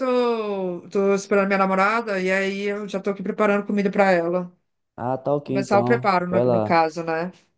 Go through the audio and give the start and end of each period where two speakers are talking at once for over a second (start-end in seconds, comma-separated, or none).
5.5-6.8